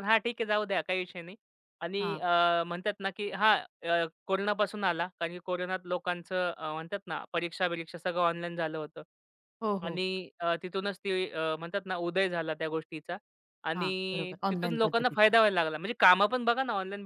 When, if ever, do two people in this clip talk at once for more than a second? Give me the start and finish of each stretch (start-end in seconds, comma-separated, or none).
13.8-15.3